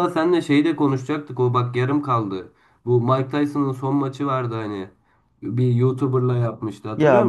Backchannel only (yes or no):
no